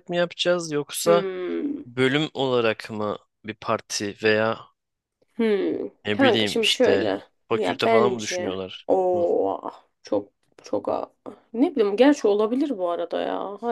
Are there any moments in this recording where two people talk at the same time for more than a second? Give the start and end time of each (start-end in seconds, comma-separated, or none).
6.0-9.2